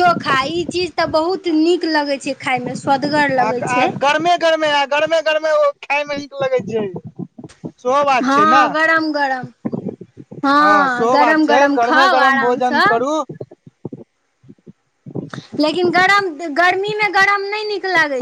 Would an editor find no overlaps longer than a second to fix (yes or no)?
no